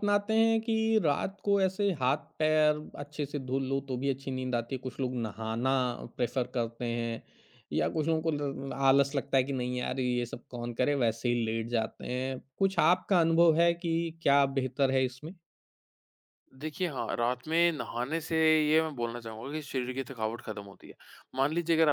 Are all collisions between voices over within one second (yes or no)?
yes